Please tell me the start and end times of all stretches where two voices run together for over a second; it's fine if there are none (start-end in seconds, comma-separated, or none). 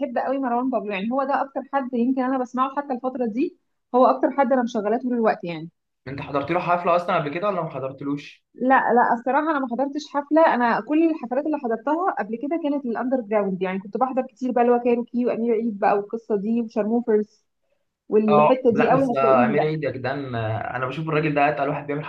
18.3-19.7